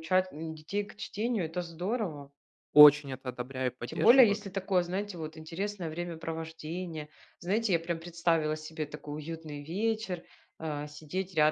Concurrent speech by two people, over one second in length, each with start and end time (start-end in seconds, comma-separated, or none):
none